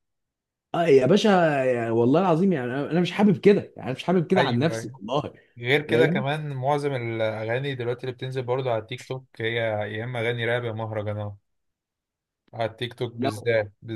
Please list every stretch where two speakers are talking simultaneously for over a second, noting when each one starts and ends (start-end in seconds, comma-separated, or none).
none